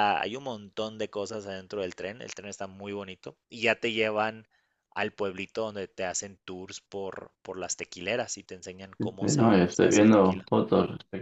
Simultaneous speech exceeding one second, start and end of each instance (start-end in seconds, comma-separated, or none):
9.2-10.5